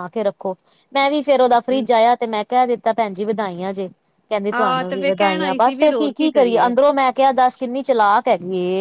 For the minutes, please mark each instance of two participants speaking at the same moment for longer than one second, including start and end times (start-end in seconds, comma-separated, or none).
4.5-6.1